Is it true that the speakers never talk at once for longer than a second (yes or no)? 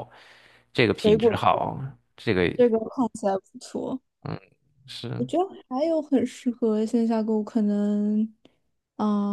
yes